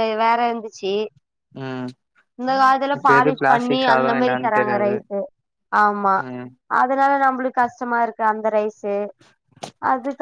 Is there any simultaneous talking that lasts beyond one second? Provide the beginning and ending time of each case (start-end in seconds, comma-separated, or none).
3.0-4.9